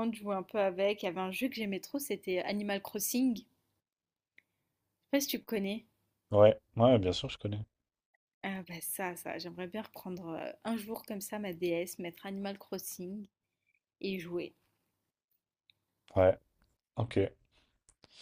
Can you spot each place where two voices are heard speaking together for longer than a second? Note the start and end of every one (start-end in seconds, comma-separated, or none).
none